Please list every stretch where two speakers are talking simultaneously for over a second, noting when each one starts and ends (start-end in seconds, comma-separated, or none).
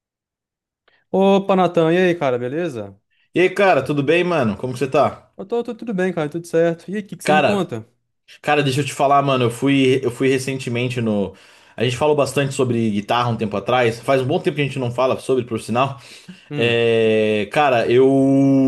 none